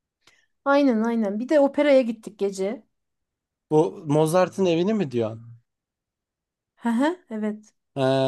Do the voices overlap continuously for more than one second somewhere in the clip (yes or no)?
no